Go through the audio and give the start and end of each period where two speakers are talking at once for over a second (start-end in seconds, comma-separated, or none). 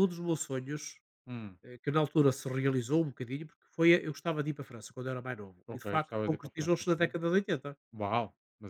5.7-7.1